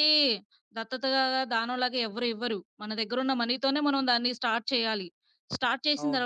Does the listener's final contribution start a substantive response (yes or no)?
no